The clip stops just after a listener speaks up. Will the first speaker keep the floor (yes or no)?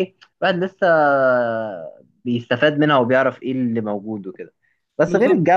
yes